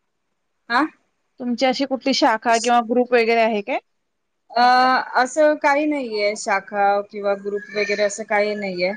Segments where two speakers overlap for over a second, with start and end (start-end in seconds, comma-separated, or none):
none